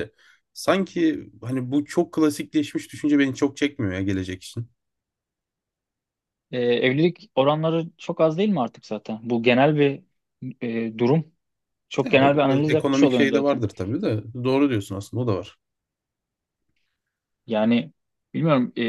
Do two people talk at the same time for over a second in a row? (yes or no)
yes